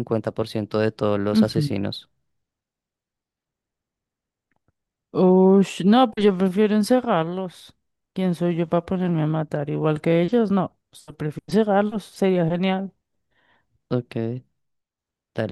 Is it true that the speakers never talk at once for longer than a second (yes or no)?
yes